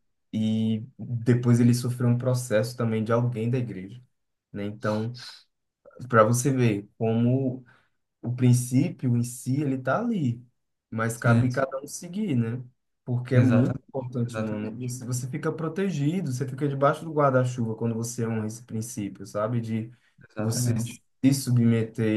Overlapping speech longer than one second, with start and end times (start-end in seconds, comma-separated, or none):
13.3-14.9